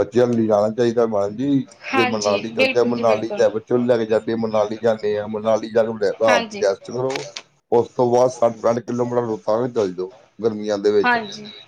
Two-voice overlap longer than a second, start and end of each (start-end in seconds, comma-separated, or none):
1.9-3.4